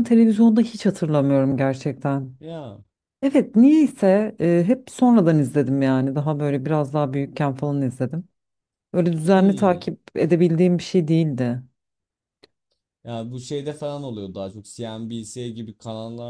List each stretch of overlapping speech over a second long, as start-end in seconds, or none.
none